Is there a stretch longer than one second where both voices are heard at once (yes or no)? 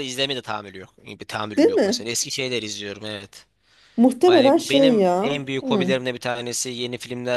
yes